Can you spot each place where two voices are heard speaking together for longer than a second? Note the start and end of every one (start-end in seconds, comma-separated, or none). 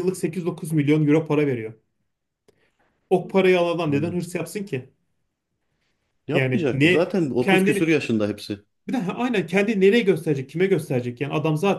6.3-7.9